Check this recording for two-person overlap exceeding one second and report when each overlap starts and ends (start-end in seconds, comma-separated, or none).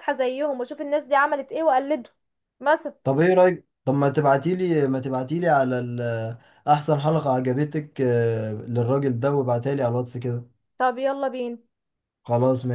none